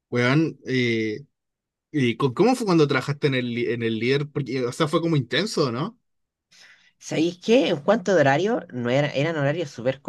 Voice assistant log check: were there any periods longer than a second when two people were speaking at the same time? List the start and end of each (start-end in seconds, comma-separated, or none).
none